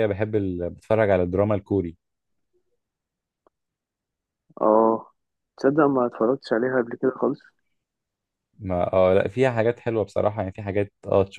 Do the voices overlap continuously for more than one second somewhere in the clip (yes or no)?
no